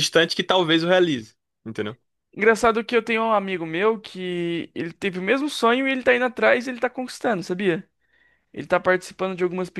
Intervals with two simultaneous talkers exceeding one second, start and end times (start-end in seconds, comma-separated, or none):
none